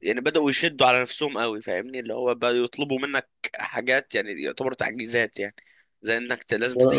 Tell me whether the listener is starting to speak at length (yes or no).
no